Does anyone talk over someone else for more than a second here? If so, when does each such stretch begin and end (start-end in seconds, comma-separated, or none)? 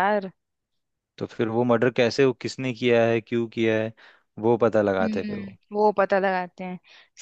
none